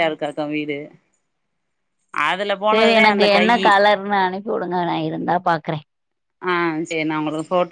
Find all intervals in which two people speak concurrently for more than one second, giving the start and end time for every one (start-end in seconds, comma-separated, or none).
none